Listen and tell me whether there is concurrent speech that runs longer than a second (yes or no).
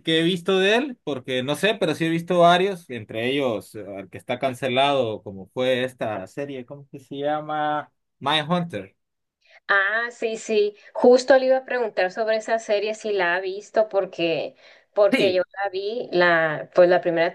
no